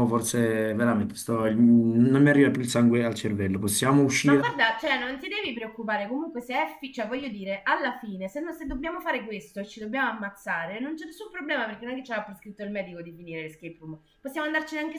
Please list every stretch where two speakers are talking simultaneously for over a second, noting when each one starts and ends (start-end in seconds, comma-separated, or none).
none